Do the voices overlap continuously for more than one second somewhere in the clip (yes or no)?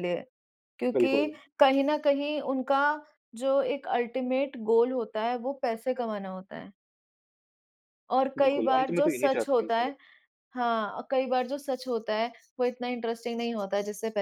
yes